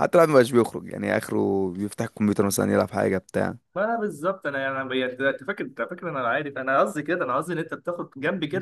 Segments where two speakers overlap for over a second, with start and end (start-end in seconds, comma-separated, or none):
none